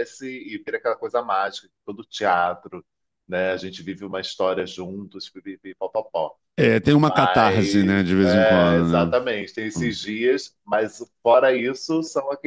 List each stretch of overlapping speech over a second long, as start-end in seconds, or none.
6.9-9.2